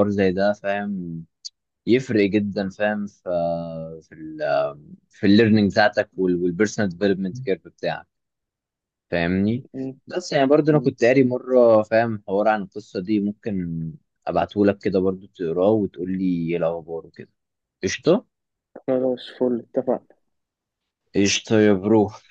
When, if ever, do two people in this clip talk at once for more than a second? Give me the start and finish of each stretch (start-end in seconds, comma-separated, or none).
none